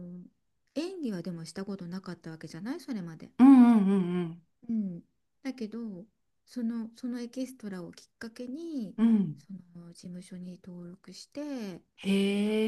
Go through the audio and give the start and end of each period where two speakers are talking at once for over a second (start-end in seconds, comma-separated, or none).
none